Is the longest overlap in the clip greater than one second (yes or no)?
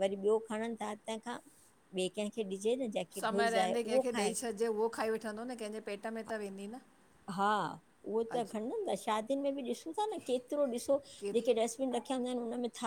no